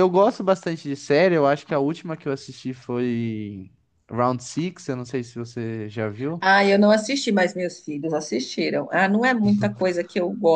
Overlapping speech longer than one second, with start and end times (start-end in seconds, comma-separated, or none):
none